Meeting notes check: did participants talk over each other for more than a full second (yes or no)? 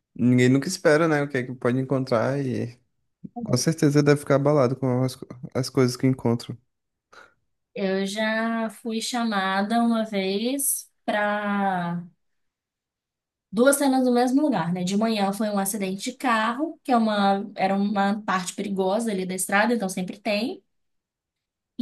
no